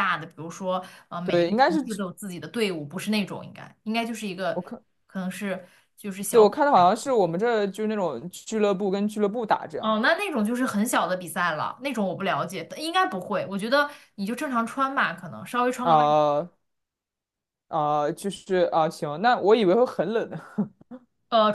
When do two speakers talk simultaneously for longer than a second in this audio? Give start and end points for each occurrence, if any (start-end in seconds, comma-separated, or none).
none